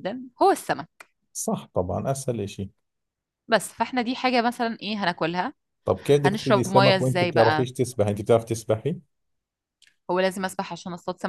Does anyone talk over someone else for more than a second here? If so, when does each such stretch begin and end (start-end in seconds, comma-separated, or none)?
6.2-7.7